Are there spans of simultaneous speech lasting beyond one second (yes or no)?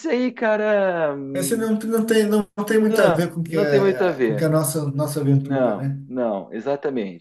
yes